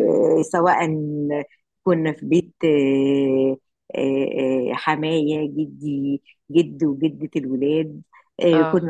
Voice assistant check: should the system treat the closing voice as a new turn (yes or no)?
no